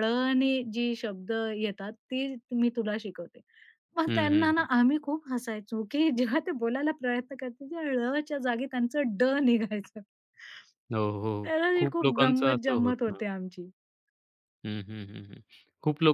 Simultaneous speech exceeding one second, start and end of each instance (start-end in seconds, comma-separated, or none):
11.5-13.2